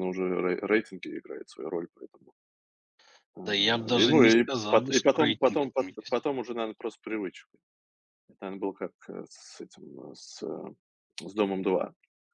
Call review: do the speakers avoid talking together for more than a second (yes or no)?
no